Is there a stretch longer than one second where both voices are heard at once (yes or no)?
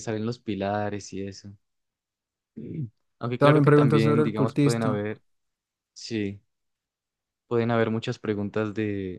yes